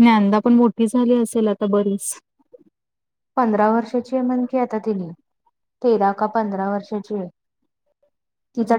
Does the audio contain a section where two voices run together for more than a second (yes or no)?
no